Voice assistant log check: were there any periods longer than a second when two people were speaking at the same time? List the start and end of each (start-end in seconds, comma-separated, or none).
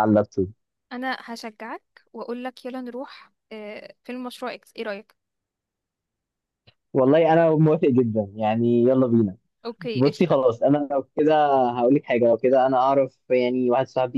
none